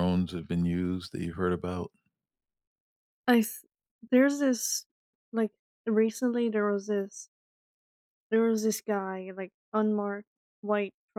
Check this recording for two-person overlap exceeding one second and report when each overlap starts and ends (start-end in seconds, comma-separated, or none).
none